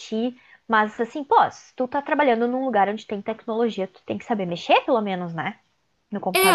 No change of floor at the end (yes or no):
no